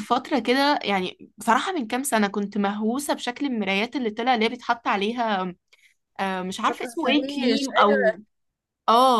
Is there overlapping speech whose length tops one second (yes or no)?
yes